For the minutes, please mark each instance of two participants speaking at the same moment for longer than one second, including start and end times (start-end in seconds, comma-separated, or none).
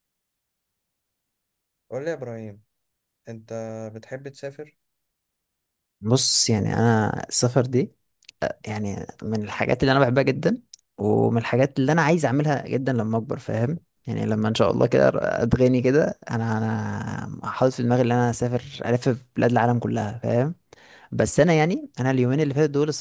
none